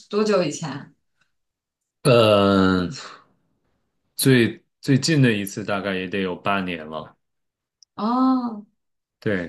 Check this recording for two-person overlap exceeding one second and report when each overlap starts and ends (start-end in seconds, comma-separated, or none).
none